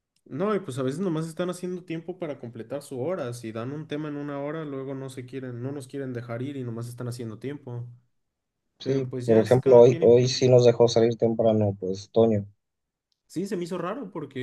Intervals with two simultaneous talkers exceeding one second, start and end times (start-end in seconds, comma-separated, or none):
8.8-10.5